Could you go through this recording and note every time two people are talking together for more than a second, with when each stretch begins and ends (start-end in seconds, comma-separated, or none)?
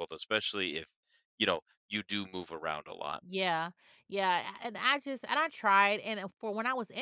none